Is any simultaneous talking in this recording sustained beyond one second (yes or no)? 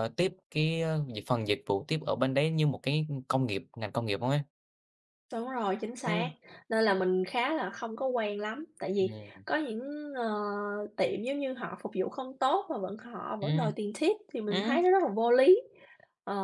no